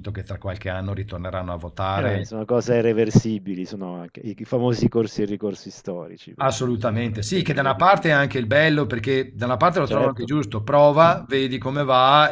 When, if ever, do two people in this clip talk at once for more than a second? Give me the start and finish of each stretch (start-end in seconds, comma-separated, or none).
6.4-7.8